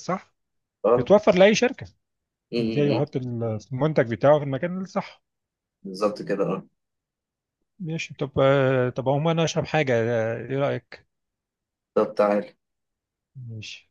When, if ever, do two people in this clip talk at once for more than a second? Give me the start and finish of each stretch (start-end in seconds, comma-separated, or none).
none